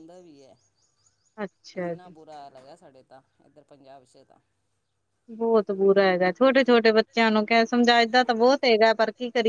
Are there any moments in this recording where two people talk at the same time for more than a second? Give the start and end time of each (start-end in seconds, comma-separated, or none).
none